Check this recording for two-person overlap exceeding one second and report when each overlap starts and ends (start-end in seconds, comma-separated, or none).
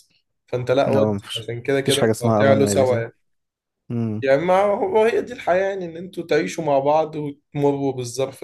0.9-3.0